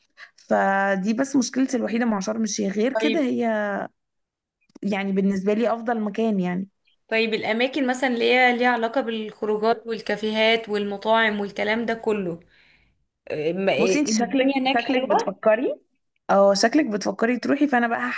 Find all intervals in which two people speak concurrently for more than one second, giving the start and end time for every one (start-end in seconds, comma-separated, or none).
13.8-15.3